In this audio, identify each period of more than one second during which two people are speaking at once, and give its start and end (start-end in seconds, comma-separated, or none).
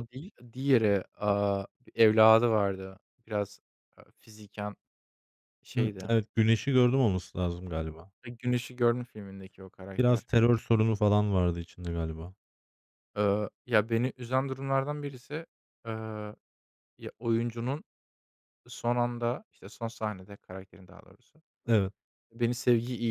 none